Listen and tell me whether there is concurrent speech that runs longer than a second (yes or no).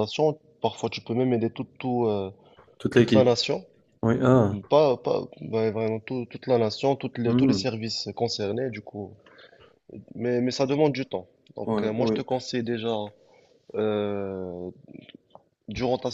no